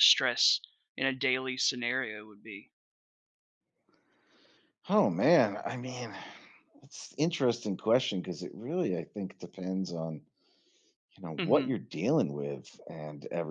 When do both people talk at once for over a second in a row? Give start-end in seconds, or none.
none